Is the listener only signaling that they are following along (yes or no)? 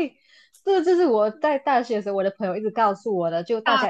yes